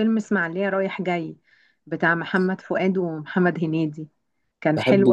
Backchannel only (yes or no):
yes